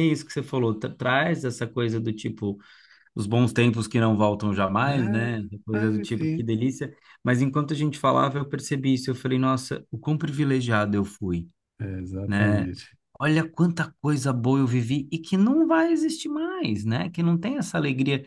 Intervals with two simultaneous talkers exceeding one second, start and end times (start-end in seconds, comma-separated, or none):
4.8-6.5